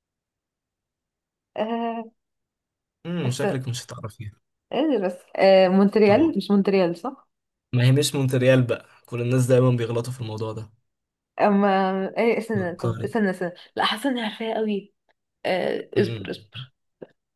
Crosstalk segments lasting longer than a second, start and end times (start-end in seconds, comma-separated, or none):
none